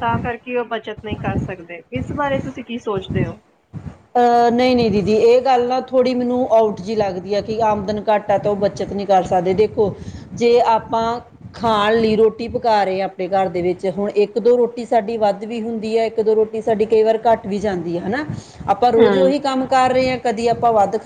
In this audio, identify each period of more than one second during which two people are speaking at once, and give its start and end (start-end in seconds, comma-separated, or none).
none